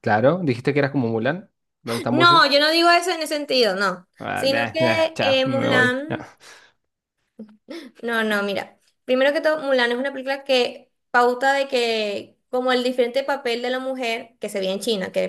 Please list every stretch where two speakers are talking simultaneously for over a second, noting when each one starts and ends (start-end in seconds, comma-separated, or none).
4.2-6.1